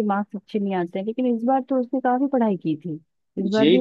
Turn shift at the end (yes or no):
yes